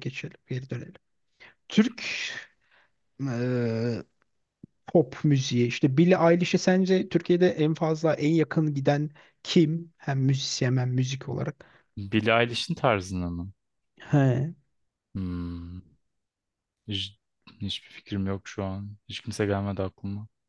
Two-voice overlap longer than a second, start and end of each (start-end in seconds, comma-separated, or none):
none